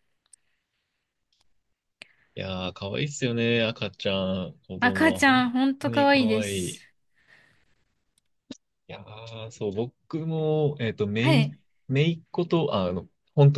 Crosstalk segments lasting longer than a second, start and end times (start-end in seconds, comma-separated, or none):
4.8-6.8